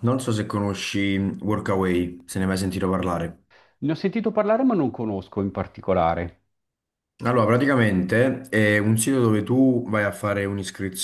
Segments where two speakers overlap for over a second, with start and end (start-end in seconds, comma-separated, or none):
none